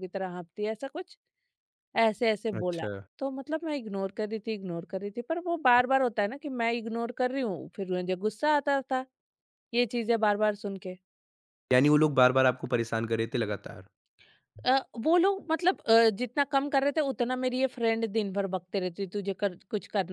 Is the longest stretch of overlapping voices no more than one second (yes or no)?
yes